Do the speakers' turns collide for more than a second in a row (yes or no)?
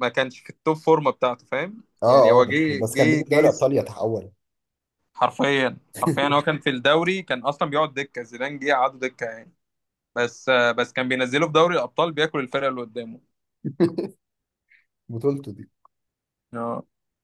yes